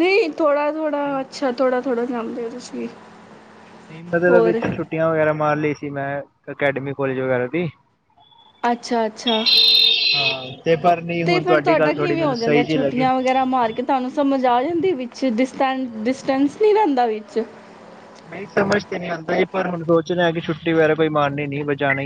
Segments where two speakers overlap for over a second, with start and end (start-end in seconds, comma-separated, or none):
11.3-13.1